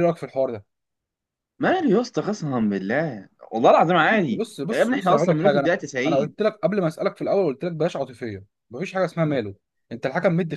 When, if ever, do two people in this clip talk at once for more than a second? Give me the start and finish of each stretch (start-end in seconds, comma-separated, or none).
4.3-6.3